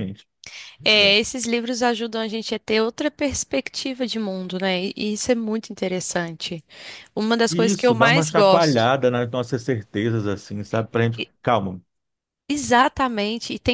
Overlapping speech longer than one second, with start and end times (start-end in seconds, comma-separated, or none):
7.5-8.9